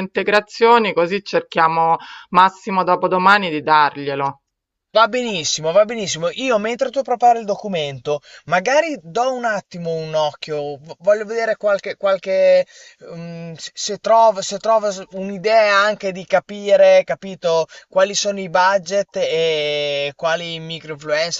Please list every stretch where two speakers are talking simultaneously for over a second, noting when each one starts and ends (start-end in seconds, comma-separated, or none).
none